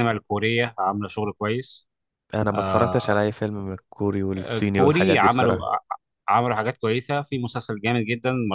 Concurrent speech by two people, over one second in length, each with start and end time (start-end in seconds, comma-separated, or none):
4.4-5.7